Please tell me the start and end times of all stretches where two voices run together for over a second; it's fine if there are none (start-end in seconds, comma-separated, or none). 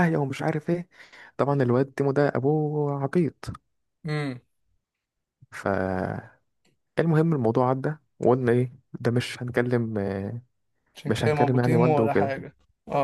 11.1-12.3